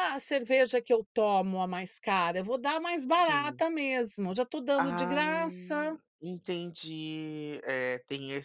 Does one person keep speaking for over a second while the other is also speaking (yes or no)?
yes